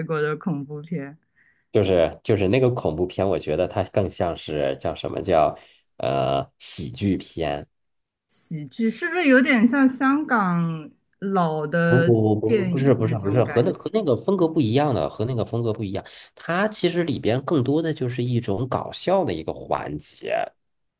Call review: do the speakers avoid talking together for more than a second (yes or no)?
no